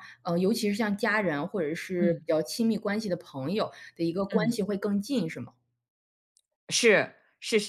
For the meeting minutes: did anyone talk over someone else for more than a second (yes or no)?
no